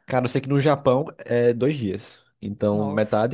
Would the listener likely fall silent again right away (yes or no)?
yes